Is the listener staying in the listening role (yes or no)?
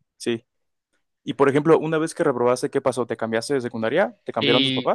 no